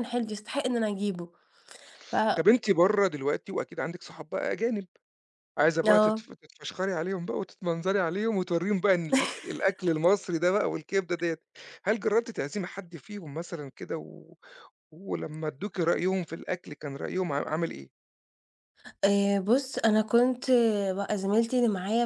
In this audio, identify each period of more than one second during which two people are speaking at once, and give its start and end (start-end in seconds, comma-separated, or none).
none